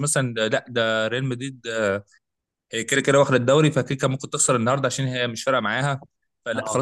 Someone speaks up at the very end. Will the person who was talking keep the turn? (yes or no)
yes